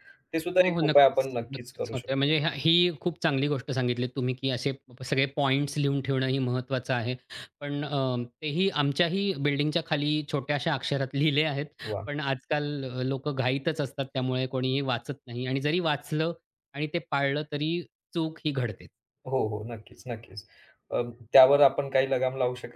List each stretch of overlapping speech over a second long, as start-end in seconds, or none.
0.6-2.3